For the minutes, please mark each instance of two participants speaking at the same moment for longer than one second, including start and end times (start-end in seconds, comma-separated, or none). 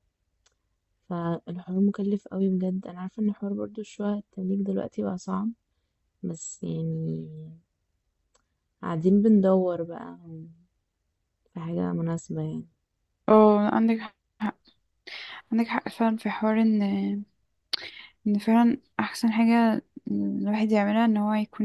none